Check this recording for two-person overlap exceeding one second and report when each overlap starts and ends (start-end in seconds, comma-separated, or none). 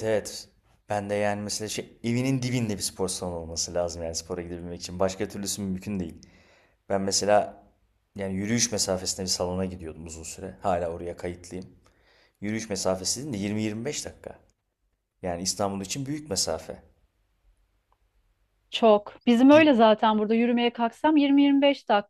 none